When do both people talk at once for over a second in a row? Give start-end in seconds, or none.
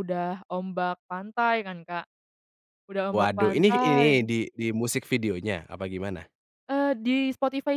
3.1-4.3